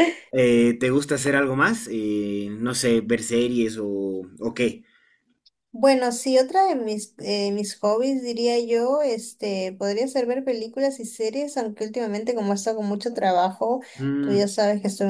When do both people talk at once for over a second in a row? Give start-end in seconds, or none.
none